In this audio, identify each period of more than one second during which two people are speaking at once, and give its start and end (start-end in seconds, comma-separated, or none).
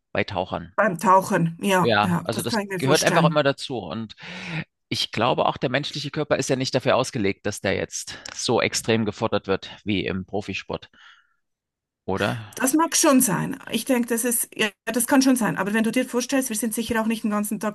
1.8-3.4